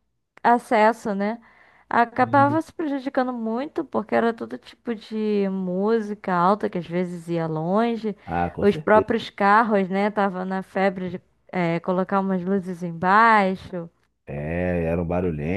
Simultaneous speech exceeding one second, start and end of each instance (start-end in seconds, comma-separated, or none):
none